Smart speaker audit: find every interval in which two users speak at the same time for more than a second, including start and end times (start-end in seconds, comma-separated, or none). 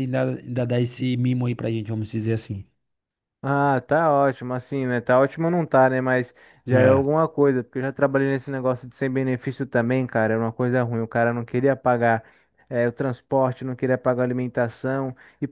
none